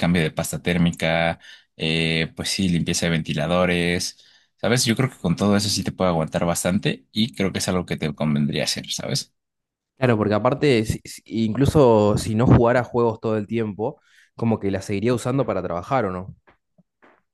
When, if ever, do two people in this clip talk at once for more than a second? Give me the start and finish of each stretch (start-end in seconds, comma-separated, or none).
none